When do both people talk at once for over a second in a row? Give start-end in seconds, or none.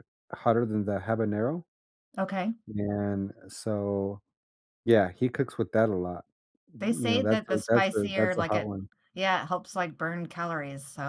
6.8-8.7